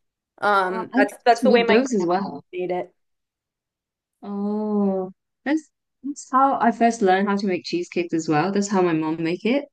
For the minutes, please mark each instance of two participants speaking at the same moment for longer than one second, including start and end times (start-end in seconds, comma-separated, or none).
0.6-2.1